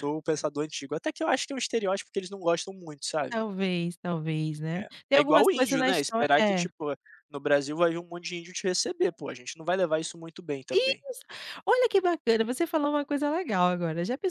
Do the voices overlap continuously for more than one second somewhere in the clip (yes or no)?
yes